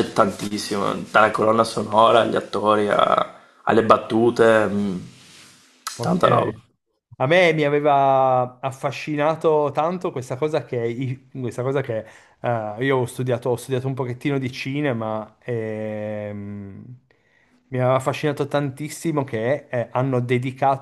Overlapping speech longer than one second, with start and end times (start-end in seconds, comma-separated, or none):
none